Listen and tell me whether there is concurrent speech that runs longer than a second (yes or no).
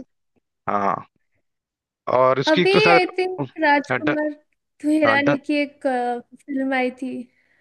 yes